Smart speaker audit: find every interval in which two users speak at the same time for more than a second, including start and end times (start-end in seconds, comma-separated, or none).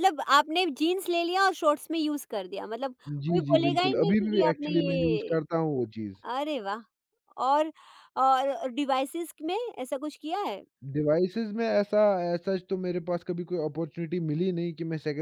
3.2-5.4